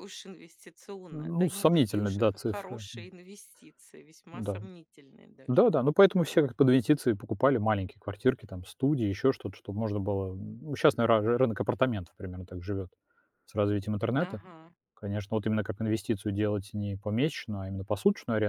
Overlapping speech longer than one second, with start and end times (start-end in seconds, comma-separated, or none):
1.1-2.8